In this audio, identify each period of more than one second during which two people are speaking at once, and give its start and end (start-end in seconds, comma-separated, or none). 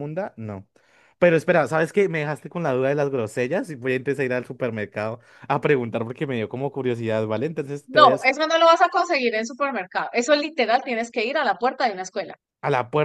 none